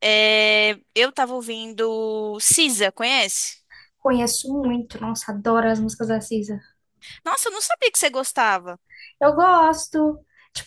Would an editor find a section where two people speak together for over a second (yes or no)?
no